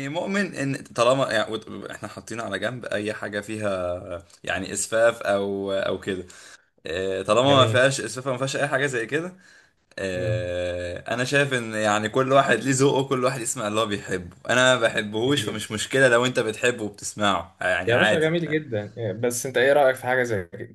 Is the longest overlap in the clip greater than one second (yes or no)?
no